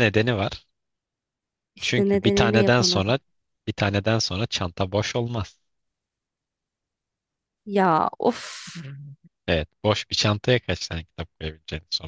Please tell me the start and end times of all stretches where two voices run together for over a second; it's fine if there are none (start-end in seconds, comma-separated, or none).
1.8-3.2